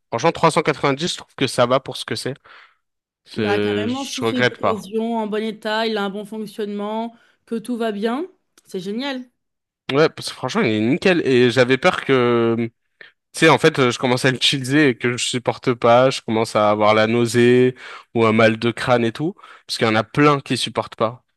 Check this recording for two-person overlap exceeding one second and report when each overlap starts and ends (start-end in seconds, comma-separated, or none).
3.4-4.9